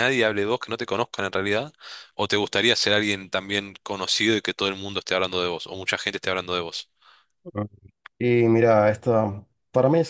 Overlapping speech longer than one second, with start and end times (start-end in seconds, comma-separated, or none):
none